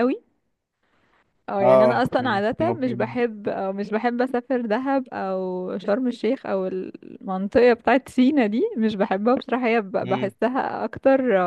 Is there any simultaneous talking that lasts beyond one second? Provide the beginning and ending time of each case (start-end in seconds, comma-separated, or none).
1.6-3.2